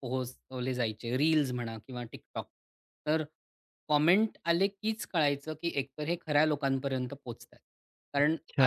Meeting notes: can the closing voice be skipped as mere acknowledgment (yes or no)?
yes